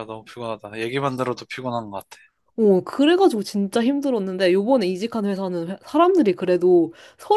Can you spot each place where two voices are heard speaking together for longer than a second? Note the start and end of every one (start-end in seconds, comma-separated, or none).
none